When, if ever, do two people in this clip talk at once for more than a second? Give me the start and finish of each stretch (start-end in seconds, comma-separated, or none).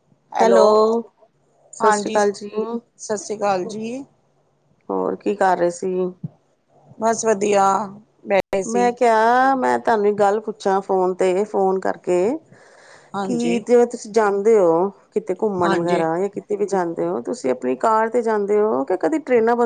none